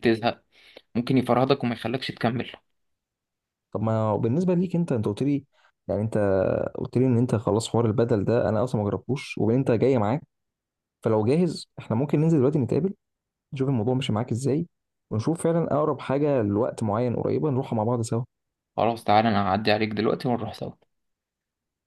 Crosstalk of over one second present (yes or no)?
no